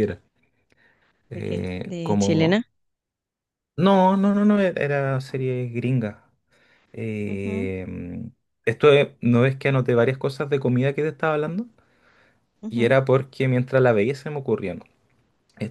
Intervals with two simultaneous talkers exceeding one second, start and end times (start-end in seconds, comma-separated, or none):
1.3-2.6